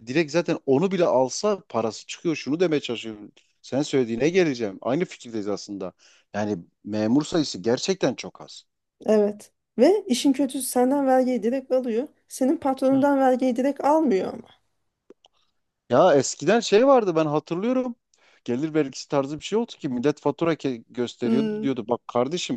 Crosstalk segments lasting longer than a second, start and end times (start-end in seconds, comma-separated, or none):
none